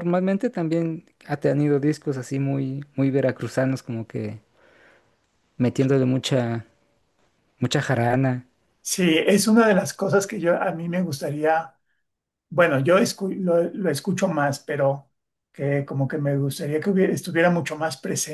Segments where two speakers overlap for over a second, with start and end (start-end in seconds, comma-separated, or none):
none